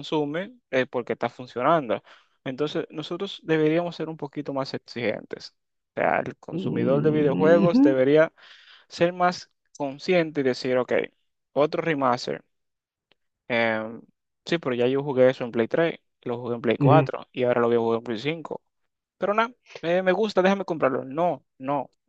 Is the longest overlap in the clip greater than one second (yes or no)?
yes